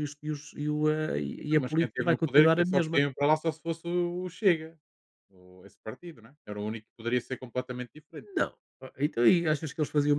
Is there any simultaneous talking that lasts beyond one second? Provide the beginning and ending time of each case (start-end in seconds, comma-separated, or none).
1.6-3.0